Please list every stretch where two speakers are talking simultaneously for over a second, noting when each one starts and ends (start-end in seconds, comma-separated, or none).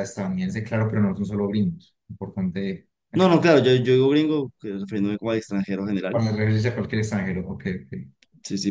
none